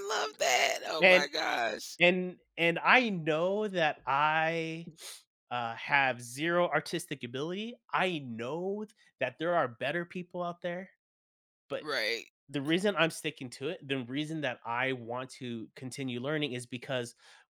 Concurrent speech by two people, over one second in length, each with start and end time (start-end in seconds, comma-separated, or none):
none